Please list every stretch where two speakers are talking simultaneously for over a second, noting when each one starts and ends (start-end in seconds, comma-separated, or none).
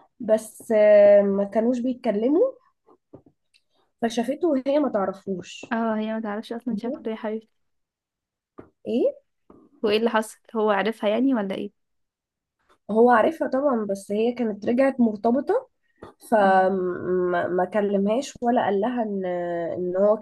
none